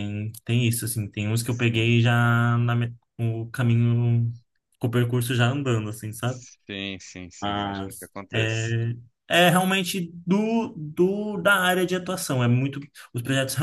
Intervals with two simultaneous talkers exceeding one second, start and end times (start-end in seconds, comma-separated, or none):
7.4-8.7